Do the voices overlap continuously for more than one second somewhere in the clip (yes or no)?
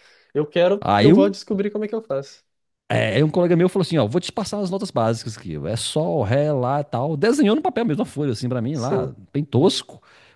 no